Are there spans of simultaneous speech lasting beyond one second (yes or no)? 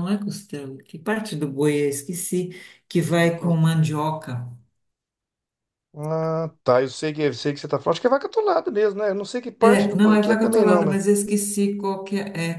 yes